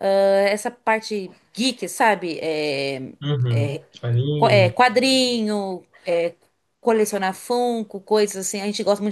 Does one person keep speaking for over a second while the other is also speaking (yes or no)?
no